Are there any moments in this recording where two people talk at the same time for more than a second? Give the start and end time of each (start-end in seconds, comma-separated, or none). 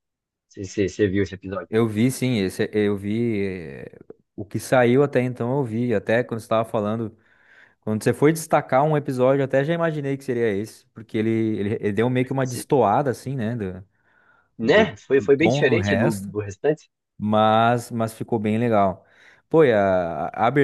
14.6-16.3